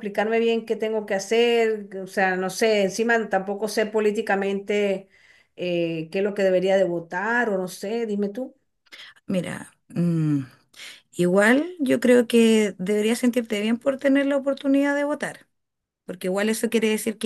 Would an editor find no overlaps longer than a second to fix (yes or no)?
yes